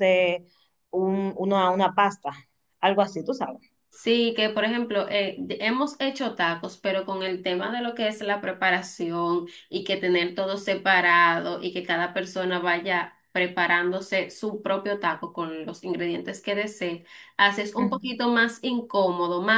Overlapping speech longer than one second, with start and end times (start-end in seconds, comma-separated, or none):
none